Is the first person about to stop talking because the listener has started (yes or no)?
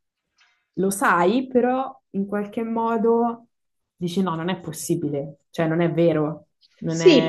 yes